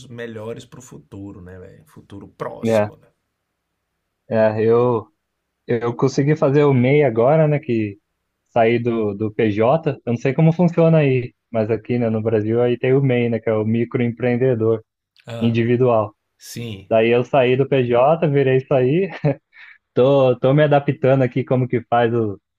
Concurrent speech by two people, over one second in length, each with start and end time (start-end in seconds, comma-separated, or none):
none